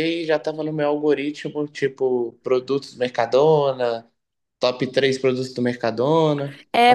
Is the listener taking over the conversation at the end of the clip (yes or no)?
yes